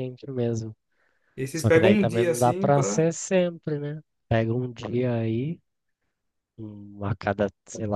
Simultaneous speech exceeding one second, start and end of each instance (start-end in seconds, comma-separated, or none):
1.5-3.1